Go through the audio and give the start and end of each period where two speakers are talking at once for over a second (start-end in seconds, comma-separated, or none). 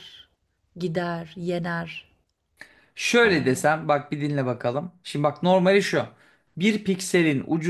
none